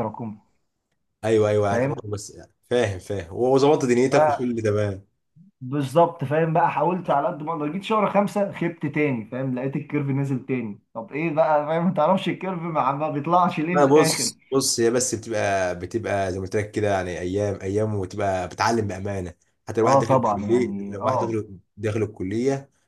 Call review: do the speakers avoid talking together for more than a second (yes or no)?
no